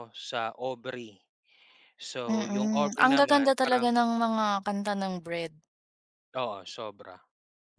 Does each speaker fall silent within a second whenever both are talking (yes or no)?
no